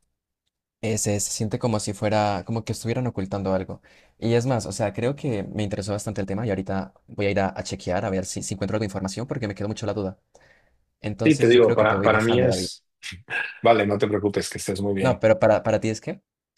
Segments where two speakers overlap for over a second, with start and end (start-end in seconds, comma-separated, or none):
11.2-12.7